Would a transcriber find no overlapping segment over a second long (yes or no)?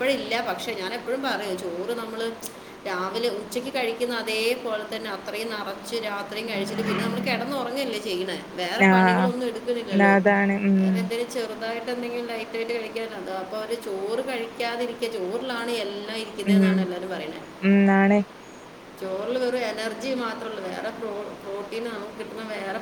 no